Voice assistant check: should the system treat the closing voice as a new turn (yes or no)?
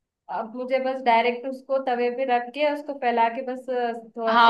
yes